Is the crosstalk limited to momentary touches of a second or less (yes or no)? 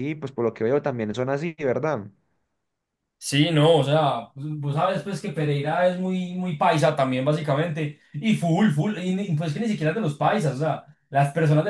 yes